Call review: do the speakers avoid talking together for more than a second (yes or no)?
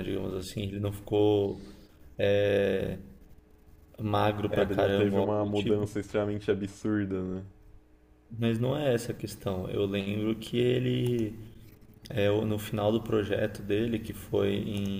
no